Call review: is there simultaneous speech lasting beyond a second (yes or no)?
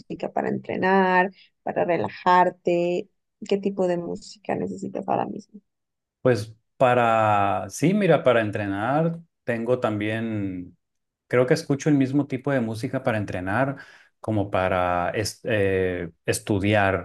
no